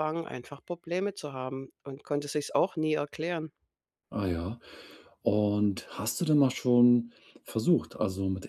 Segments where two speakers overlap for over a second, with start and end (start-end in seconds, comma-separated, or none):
none